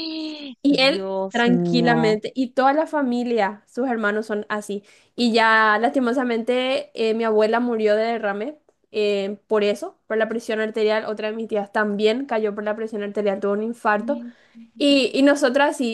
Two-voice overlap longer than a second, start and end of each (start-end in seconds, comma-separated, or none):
0.6-2.1